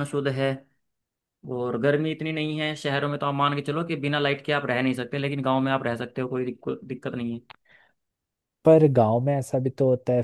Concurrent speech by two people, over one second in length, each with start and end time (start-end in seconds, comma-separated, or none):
none